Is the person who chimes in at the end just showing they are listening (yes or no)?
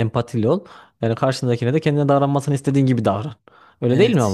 no